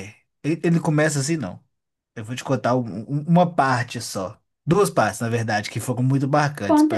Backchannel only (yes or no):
no